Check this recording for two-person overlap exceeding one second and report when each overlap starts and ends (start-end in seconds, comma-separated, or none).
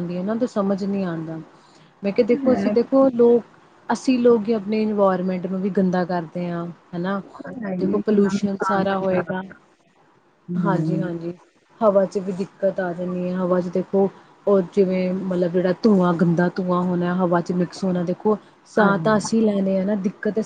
7.8-9.4